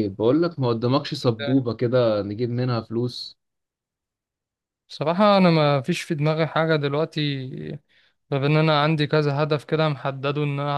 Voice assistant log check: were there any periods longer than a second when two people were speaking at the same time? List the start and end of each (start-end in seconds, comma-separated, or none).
none